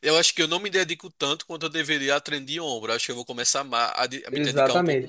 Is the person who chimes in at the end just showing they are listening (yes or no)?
no